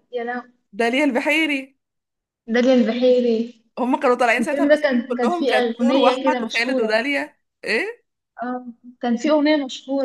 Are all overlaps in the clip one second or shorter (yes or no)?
no